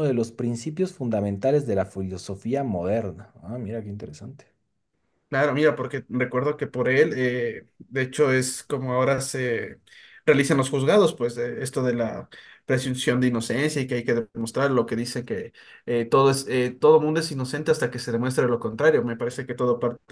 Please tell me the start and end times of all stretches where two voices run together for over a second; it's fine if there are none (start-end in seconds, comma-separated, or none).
none